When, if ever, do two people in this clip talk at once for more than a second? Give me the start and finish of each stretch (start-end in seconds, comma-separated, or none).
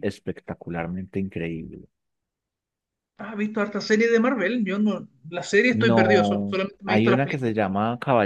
5.7-7.5